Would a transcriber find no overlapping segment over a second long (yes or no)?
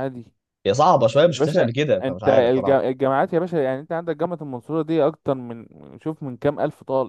no